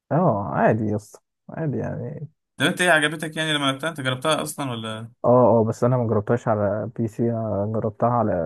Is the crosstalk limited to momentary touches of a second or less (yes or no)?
yes